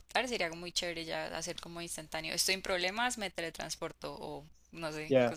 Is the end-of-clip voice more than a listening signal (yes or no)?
yes